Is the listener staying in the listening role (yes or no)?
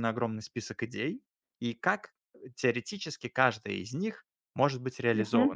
yes